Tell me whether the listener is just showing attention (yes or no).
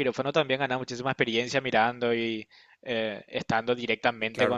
no